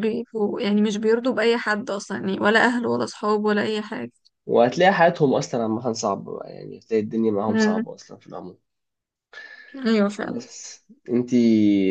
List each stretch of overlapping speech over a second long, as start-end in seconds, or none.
none